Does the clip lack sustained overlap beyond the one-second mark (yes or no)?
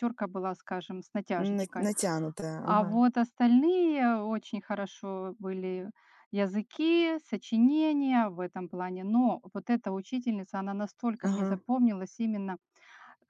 yes